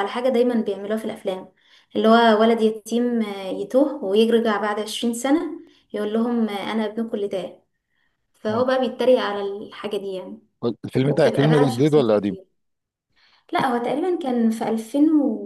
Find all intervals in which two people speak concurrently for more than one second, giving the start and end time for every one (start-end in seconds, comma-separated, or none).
11.1-12.3